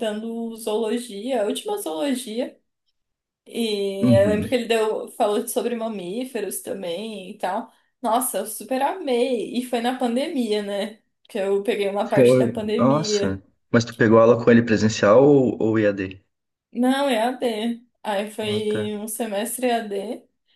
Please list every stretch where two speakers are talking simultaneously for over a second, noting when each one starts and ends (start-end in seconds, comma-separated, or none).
12.0-13.4